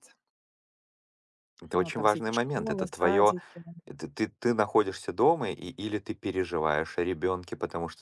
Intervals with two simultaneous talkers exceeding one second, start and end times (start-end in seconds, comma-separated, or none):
1.7-3.4